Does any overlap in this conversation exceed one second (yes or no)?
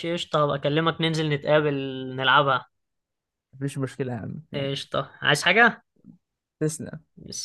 no